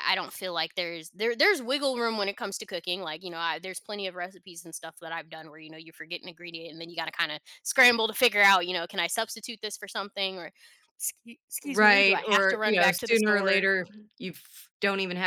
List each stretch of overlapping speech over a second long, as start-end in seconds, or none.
11.7-13.7